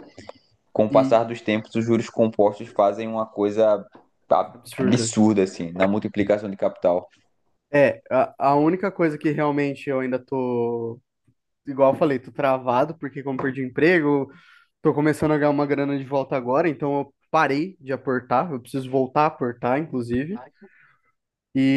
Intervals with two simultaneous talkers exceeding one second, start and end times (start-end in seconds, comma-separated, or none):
none